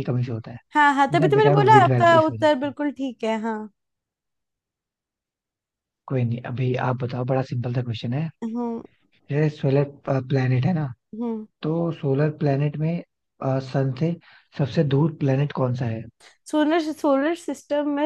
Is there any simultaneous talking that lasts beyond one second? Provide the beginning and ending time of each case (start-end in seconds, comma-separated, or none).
1.1-2.7